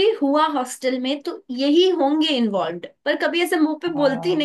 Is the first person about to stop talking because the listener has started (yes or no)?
no